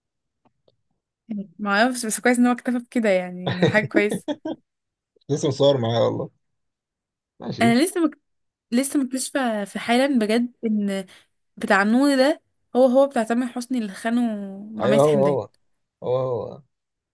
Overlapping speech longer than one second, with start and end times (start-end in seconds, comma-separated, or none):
none